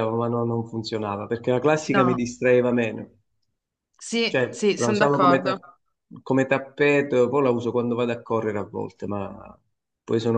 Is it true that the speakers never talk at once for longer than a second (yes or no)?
no